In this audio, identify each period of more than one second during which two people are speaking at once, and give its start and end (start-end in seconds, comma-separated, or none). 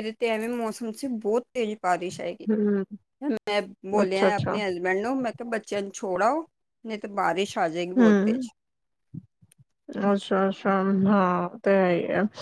none